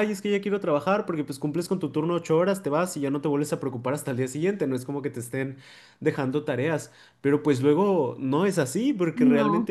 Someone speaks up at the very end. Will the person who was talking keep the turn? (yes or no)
yes